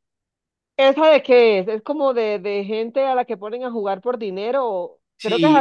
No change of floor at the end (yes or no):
no